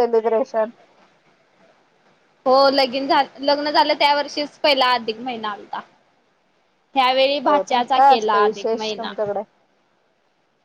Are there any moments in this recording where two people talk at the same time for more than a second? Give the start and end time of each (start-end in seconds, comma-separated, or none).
7.5-9.1